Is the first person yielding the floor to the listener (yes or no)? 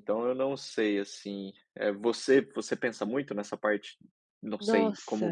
no